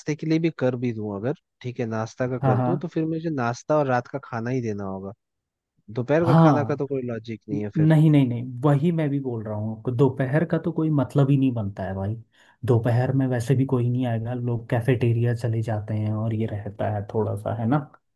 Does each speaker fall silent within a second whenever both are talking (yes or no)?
yes